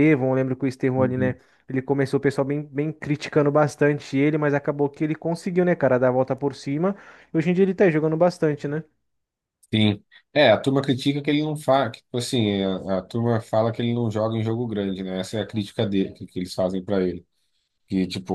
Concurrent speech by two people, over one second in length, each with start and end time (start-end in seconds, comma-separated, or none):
none